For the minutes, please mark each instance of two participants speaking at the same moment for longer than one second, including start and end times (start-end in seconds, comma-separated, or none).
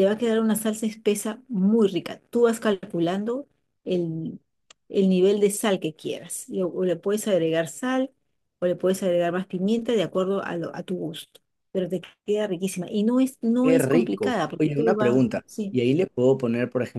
13.6-15.8